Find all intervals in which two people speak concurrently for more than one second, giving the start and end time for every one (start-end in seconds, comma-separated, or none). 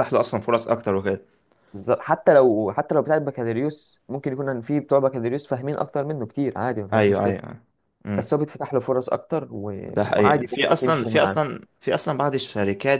9.9-11.4